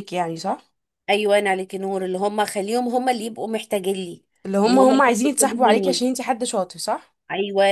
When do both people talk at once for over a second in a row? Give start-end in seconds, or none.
4.7-6.0